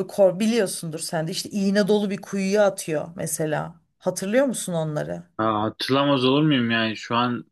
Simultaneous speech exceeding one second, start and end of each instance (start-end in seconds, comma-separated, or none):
none